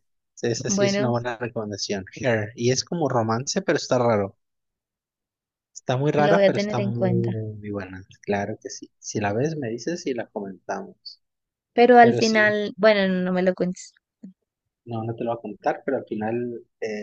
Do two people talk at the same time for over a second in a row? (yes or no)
yes